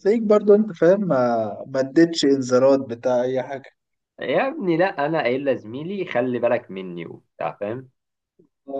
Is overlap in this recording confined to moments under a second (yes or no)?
yes